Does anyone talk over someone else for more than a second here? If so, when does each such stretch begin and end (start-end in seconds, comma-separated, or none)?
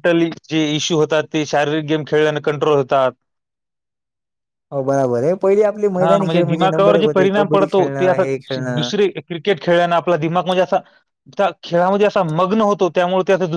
6.0-8.9